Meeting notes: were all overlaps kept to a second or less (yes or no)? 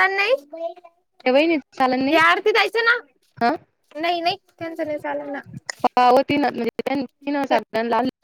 yes